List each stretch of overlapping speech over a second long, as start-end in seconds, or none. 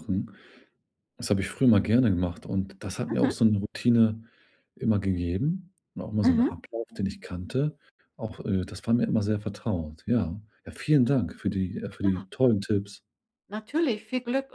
none